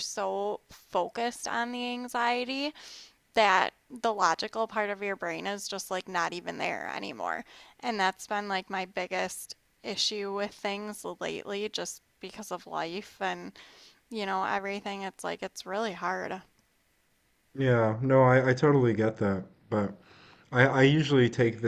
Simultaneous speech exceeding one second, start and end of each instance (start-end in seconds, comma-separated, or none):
none